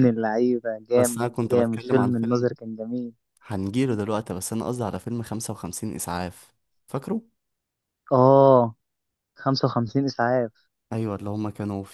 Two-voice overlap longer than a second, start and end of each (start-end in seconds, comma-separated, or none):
1.0-2.5